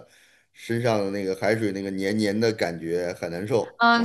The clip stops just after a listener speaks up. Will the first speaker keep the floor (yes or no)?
no